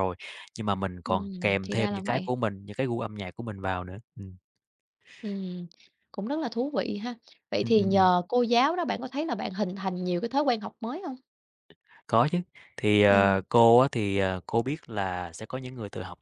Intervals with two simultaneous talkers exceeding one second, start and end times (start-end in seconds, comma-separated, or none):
1.1-2.3